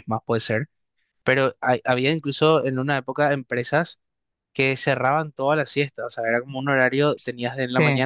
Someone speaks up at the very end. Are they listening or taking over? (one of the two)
listening